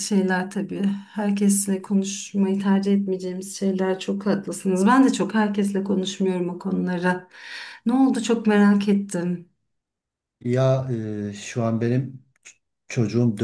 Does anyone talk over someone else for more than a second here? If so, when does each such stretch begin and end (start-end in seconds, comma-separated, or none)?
none